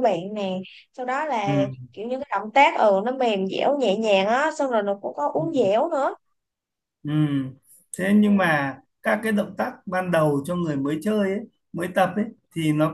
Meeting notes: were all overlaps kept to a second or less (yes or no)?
yes